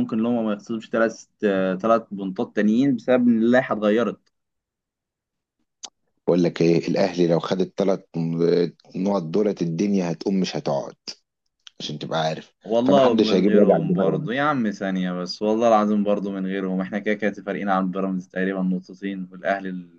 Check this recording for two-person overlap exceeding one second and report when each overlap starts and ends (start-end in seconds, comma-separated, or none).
12.6-14.3